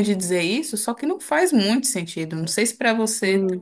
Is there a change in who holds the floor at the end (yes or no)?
yes